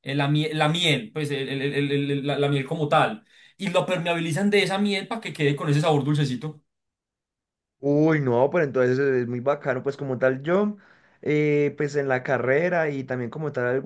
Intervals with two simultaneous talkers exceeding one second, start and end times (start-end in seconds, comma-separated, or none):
none